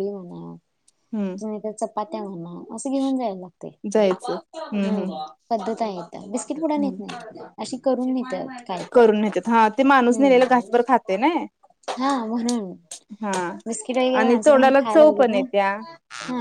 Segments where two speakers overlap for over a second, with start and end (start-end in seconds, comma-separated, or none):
14.2-15.8